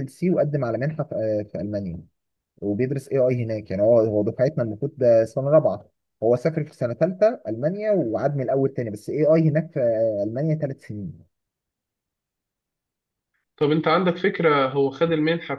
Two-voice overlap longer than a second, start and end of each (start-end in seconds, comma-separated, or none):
none